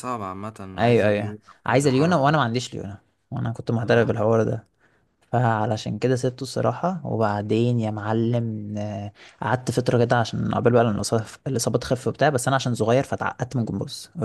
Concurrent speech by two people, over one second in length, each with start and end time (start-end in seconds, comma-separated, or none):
0.8-2.4